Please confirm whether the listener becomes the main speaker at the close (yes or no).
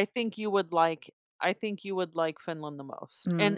yes